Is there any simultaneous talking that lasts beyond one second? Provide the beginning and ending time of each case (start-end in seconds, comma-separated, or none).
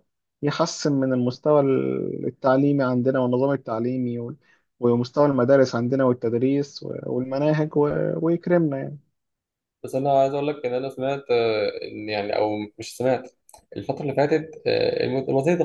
none